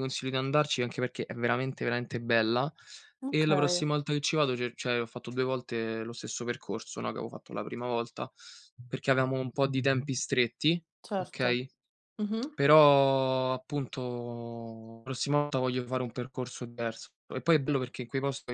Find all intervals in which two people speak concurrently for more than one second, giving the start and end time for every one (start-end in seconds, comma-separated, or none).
none